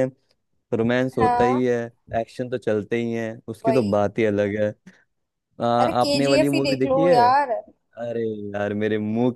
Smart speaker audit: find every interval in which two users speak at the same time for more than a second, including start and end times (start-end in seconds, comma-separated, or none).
5.8-7.2